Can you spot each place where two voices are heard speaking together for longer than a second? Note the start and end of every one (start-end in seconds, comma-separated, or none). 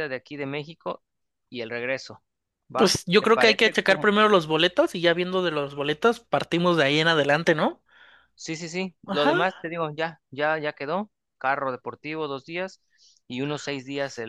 2.8-4.1